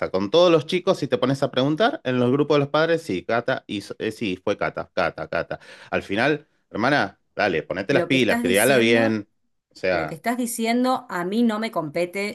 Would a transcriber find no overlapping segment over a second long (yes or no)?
no